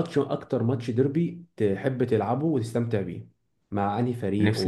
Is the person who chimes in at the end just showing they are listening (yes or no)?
no